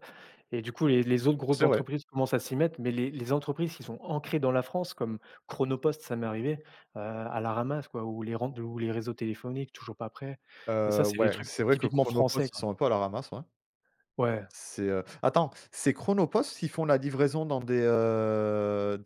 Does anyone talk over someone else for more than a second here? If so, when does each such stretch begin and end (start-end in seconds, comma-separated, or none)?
10.8-12.7